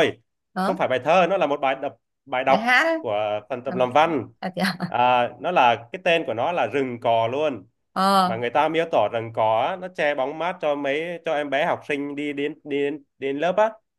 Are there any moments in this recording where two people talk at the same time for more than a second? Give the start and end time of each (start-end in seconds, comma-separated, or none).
none